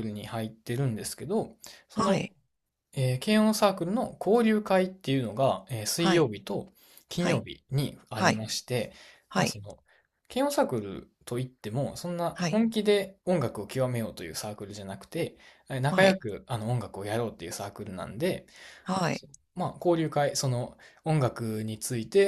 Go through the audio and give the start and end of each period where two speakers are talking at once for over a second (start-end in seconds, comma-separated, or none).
none